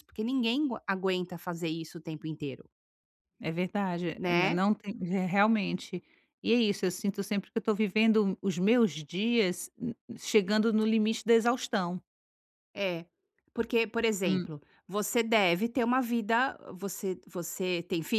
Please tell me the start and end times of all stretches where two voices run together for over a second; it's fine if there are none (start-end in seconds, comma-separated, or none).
none